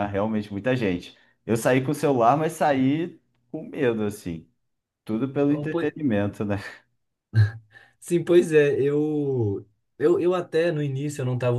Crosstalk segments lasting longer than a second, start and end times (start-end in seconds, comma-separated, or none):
none